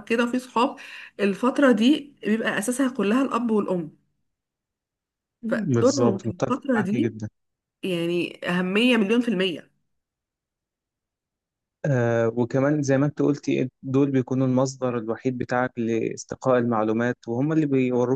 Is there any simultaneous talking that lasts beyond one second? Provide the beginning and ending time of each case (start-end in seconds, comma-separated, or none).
5.7-7.1